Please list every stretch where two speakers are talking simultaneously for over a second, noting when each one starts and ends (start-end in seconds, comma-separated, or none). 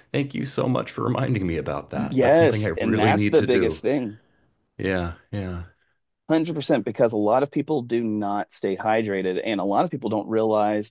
1.9-3.8